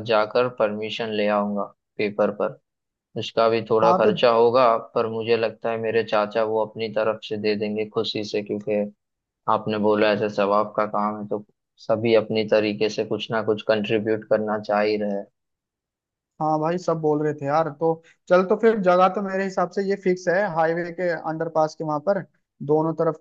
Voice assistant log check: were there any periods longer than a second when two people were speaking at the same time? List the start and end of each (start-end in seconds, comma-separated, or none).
none